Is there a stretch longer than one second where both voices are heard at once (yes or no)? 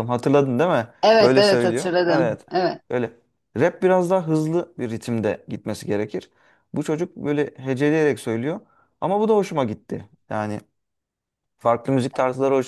yes